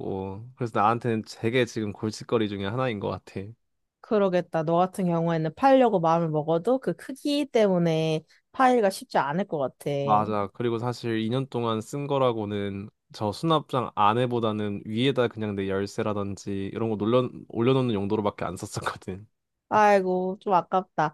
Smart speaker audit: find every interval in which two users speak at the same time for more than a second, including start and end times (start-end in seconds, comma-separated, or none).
none